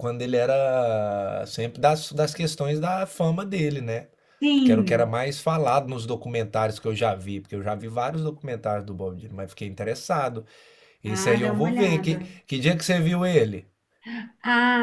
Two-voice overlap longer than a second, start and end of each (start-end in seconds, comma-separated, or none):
11.1-12.3